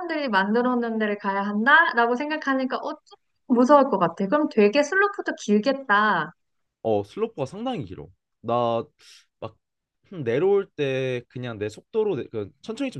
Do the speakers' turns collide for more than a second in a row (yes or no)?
no